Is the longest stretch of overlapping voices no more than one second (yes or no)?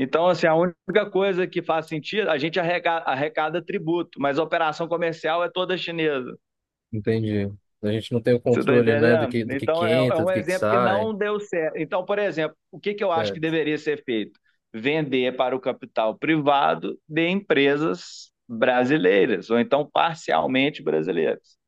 no